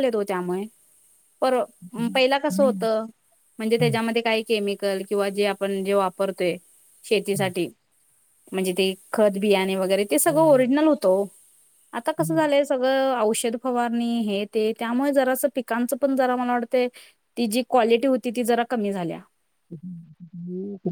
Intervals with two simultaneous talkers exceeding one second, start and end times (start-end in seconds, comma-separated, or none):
none